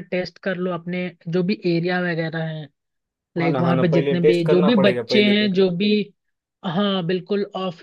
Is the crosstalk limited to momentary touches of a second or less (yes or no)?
no